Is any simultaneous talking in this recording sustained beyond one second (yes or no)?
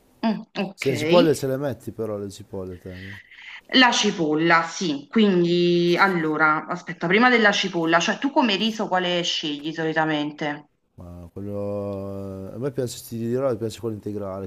no